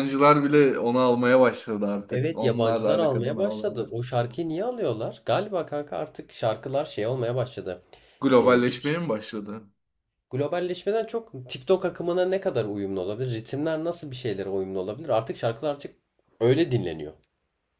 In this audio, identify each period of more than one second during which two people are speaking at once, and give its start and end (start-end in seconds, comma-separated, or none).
2.1-3.9